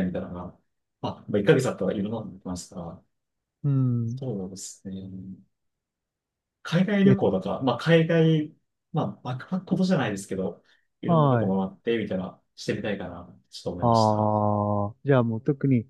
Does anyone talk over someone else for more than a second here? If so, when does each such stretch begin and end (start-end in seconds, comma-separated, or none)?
none